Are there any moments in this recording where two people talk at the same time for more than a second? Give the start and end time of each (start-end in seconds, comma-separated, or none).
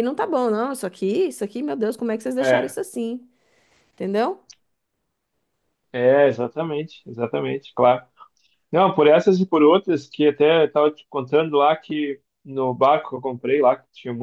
none